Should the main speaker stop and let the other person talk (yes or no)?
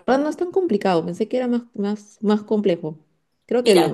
no